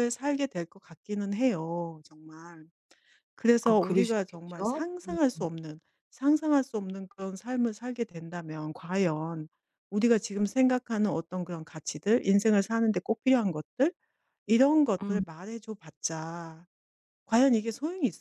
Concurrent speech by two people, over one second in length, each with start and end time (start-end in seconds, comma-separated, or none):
3.6-5.2